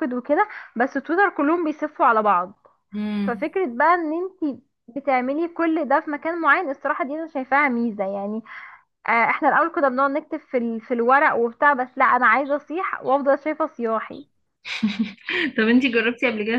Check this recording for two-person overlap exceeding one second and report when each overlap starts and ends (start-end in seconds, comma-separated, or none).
none